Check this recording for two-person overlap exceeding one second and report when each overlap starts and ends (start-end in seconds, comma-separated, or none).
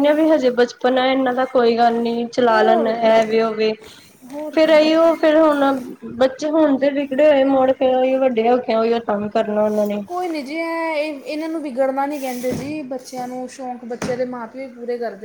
none